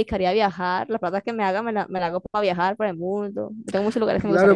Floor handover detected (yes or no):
yes